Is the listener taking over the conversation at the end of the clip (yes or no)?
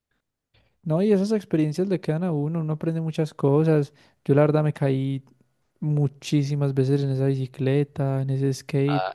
yes